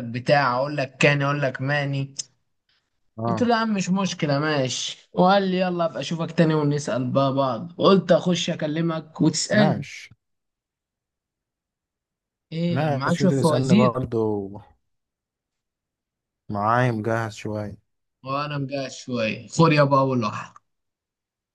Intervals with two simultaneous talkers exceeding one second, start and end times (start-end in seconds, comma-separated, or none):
12.7-13.9